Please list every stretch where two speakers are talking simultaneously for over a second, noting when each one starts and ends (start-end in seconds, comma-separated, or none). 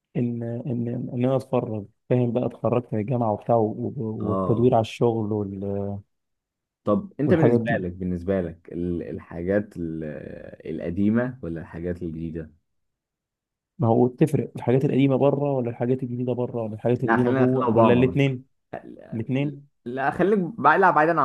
17.0-18.3